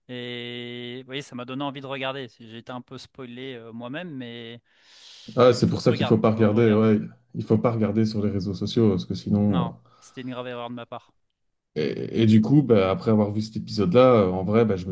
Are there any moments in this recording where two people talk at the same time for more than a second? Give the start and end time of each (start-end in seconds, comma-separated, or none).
5.6-6.8